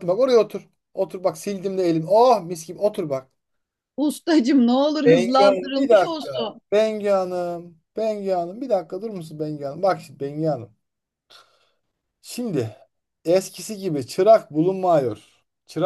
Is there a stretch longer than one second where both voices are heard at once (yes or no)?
yes